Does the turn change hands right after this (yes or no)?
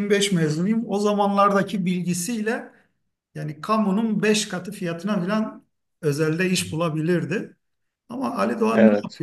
no